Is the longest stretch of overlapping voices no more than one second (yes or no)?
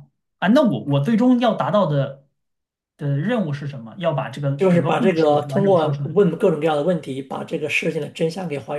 no